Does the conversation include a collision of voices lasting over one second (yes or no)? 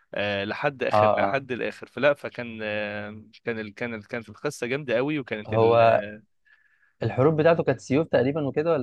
no